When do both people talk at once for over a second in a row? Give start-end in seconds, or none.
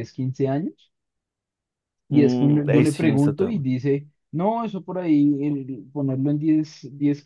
2.1-3.6